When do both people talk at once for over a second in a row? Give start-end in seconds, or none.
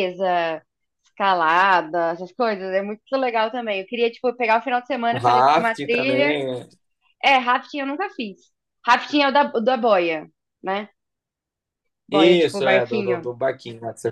5.1-6.4, 12.1-13.3